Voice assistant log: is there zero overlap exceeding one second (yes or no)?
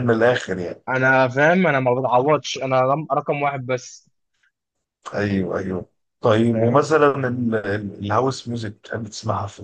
yes